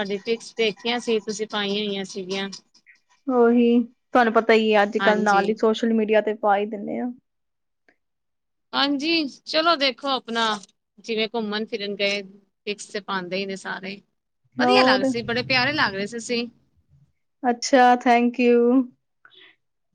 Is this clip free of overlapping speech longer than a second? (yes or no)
yes